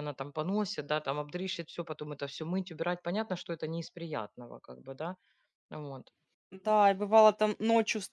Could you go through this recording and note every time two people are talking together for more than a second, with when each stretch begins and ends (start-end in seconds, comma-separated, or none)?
none